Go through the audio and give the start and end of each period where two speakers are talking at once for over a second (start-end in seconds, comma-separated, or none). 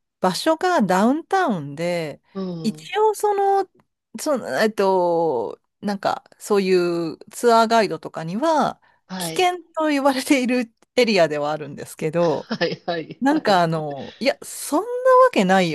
none